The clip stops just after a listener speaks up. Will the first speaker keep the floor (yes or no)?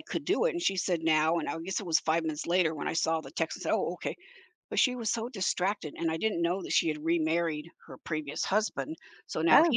yes